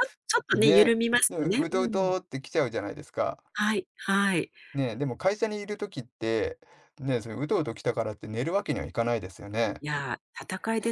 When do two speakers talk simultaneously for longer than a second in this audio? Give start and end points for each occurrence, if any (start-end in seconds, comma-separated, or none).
0.5-2.1